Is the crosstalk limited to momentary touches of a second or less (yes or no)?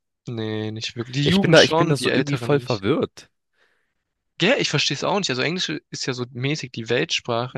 no